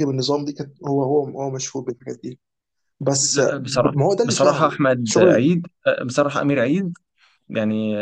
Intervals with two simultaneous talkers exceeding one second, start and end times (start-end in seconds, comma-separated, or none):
3.2-5.5